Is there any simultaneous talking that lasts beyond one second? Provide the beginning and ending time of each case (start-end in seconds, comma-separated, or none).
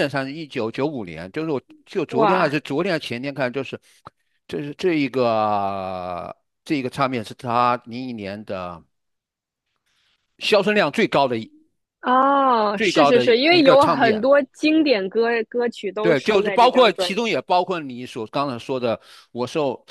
12.8-14.2, 16.0-17.4